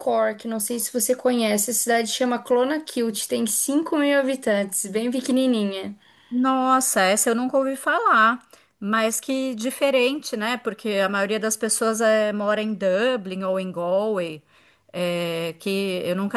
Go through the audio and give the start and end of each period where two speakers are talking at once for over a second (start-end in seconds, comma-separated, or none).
none